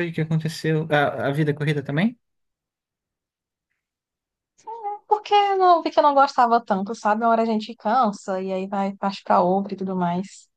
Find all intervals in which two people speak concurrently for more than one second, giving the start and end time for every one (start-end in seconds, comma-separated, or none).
none